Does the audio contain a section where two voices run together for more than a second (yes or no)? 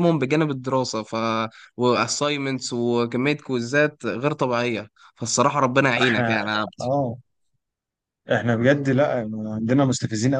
no